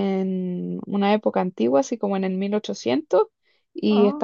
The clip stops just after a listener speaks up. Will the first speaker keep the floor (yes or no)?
yes